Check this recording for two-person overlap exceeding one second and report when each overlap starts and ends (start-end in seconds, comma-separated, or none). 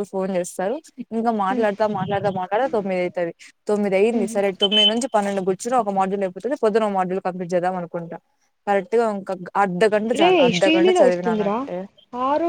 10.2-11.6